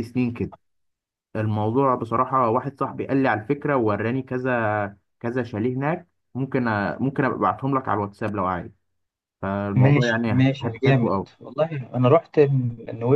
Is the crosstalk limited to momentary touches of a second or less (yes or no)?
no